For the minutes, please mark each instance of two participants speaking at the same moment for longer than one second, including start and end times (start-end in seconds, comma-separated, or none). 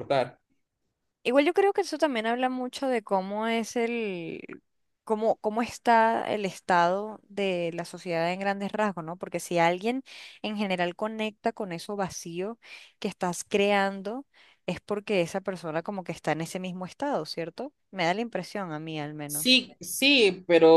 none